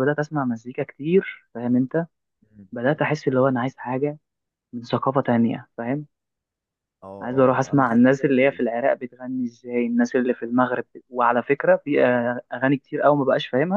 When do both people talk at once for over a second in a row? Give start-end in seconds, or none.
7.2-8.6